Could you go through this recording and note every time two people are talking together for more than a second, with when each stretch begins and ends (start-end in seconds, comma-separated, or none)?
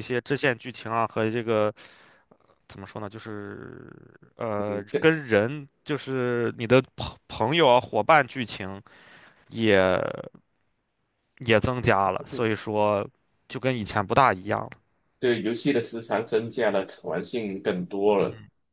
none